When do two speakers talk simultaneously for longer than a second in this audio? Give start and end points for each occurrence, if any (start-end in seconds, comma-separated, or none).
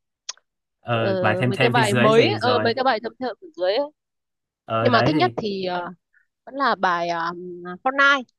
0.9-2.7